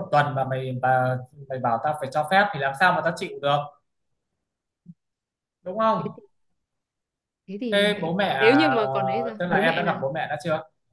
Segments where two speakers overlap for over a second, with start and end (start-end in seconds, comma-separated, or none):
7.7-10.0